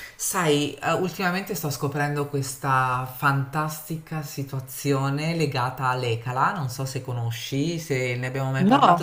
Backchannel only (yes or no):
yes